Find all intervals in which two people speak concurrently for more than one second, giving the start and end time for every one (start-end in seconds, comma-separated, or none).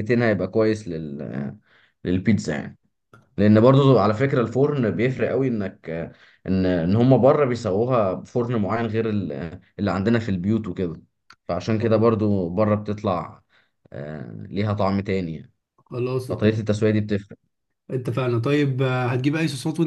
none